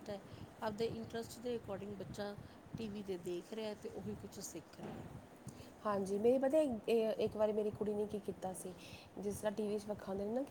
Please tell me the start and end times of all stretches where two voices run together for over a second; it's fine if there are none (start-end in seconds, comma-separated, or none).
none